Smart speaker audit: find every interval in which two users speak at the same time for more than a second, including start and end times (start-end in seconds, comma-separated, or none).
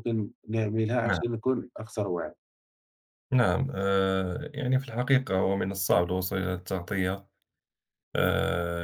none